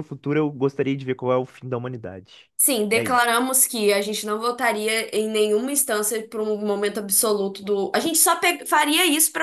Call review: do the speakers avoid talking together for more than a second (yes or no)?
yes